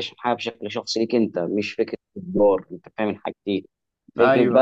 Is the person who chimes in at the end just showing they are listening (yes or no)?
yes